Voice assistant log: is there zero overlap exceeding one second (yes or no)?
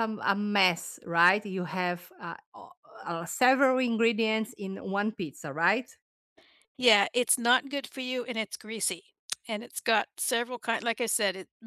yes